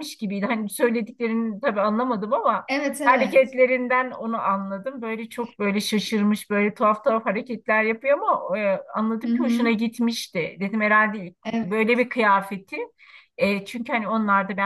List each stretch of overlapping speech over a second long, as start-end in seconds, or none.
none